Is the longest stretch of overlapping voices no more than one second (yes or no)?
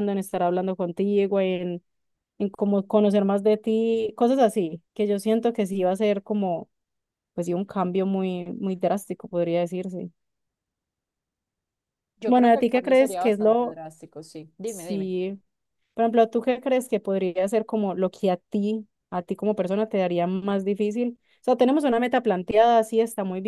no